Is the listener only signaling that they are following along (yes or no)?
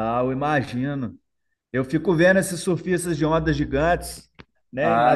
no